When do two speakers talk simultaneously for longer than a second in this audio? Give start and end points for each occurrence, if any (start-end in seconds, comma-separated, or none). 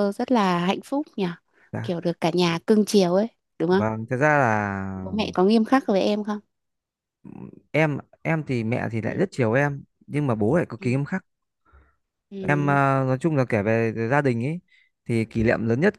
none